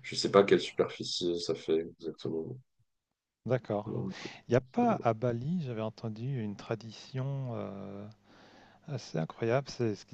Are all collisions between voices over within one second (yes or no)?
yes